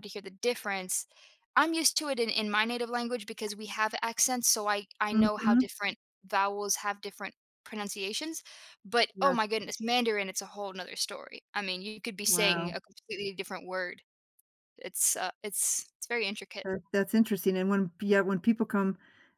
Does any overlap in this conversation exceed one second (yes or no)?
no